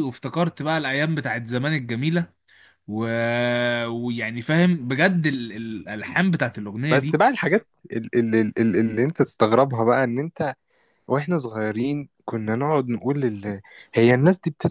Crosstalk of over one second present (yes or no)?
no